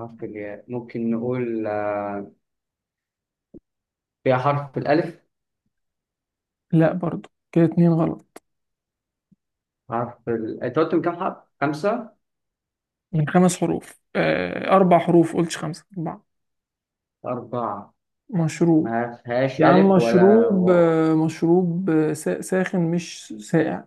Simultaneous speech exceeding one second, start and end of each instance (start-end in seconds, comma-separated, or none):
19.6-20.9